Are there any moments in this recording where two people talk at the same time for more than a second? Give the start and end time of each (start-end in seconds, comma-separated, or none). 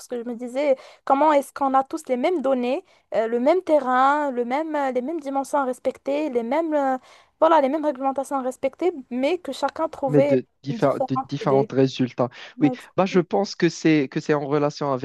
10.1-11.7